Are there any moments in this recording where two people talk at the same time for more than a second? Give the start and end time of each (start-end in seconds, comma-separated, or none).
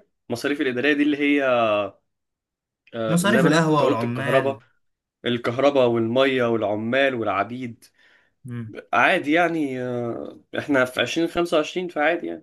3.1-4.6